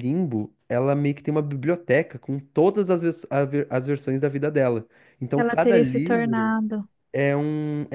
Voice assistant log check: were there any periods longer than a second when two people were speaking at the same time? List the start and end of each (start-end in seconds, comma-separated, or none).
5.4-6.6